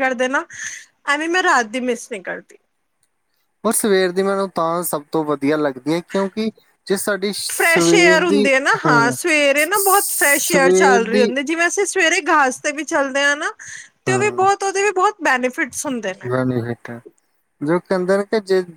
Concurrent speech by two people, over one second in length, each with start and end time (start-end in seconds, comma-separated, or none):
9.6-11.3